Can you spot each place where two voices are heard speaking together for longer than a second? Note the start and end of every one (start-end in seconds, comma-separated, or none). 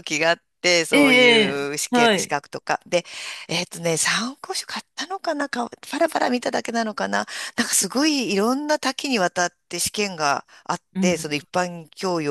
0.9-2.4